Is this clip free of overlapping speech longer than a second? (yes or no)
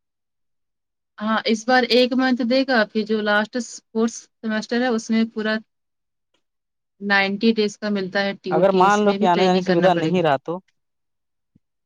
no